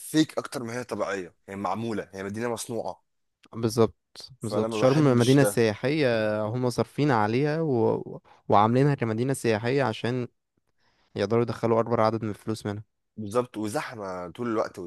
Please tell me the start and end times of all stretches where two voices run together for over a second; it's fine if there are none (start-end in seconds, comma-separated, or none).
4.4-5.6